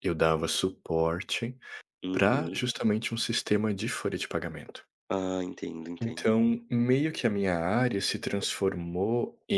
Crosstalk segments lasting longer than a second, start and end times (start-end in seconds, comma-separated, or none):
none